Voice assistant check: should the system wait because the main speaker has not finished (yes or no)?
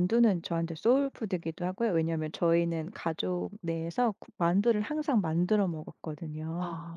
yes